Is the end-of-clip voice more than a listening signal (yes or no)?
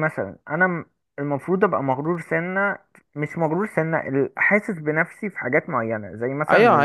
yes